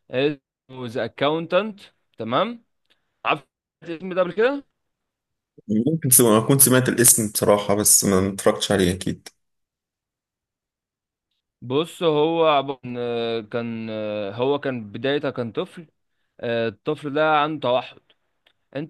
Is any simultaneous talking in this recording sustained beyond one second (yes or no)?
no